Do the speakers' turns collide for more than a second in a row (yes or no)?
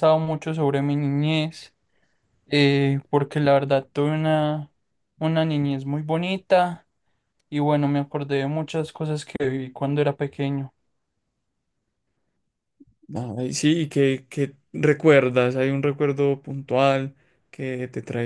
no